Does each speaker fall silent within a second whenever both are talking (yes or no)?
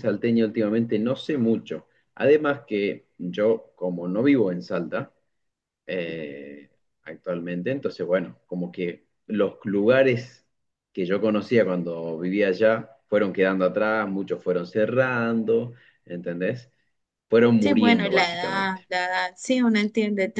no